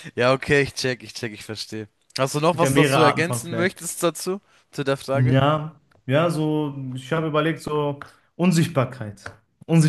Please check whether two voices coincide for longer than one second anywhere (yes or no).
yes